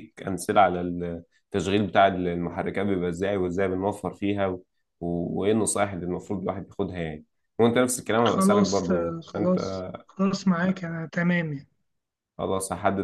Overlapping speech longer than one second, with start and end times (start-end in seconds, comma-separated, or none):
8.3-9.6